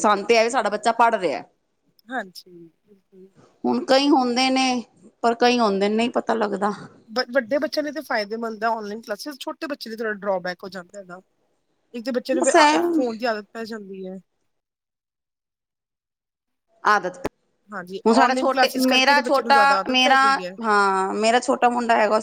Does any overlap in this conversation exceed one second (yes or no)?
yes